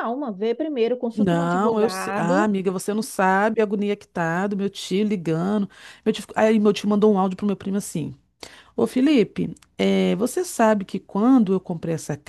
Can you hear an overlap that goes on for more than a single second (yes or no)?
yes